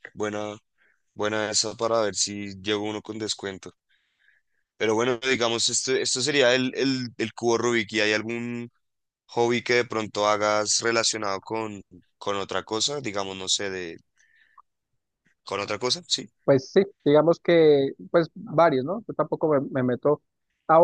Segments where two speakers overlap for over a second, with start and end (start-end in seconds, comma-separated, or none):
none